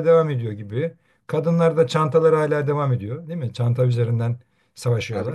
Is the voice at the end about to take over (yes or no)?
yes